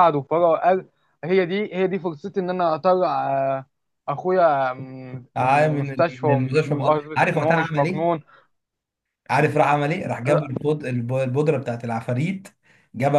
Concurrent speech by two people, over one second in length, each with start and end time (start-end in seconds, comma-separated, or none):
5.4-8.0